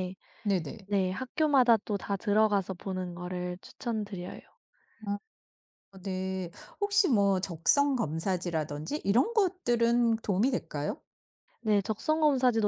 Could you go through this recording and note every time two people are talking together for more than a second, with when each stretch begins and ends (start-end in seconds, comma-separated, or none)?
none